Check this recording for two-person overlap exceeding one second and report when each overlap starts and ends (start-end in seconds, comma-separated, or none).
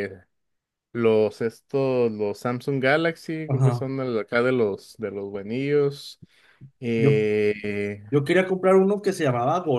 none